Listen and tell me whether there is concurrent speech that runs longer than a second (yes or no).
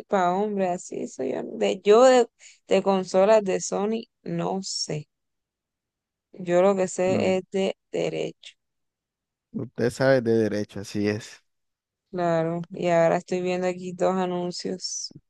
no